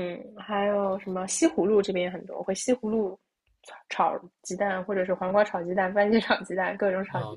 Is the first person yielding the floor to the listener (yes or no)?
yes